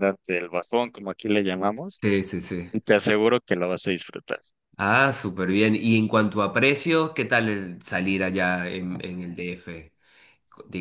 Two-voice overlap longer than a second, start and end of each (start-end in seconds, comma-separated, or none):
none